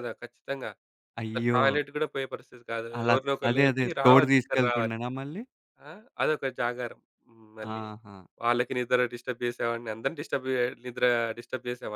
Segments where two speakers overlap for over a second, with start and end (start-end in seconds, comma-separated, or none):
3.0-5.0